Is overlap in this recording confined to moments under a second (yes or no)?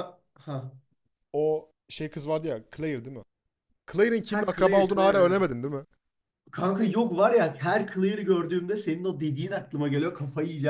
no